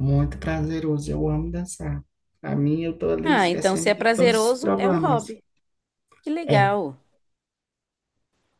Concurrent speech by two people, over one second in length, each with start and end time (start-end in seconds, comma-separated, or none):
3.2-5.3